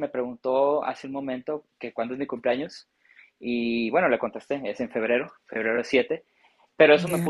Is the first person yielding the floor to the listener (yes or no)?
no